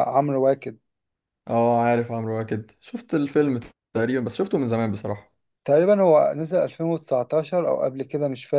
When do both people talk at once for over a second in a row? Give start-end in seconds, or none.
none